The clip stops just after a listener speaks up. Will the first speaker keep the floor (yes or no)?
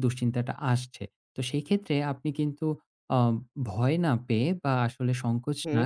yes